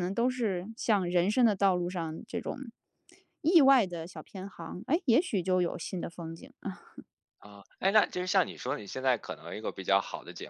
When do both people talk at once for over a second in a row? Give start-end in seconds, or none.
none